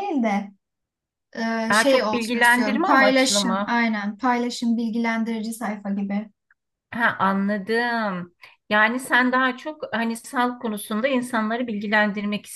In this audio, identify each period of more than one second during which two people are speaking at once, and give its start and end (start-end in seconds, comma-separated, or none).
1.7-3.8